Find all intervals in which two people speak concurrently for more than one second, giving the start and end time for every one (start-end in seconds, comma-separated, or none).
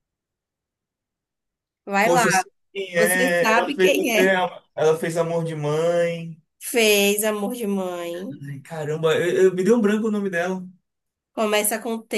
3.0-4.3